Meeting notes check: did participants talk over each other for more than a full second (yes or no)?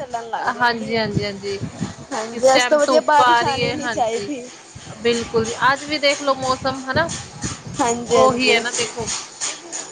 yes